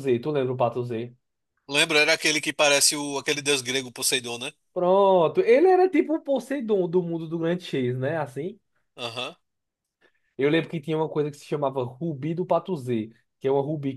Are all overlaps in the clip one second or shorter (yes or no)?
yes